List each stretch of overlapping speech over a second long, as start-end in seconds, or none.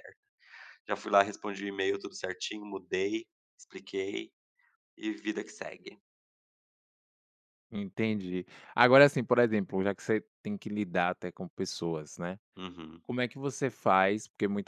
none